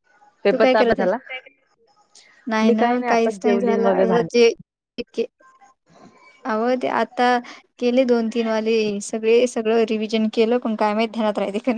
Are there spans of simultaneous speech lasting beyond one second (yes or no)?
yes